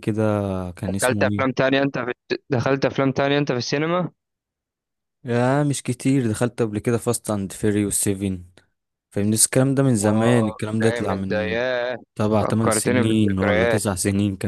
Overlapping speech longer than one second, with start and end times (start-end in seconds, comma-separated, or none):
10.0-11.6, 12.4-13.8